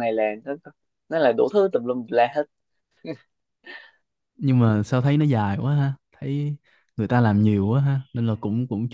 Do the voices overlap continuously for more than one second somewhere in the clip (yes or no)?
no